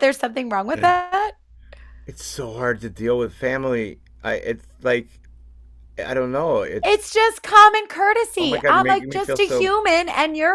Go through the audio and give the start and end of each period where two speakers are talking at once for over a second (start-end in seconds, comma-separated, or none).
8.4-9.7